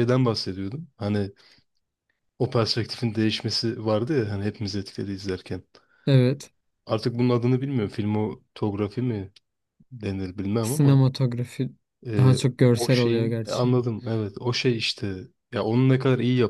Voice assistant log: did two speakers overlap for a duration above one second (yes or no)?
yes